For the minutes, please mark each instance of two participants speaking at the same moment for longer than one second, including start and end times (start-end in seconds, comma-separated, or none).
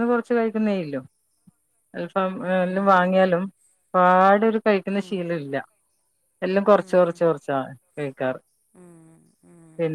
none